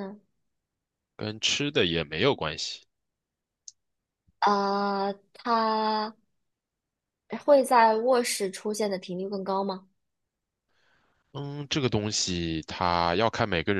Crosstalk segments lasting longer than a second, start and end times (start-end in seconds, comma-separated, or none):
none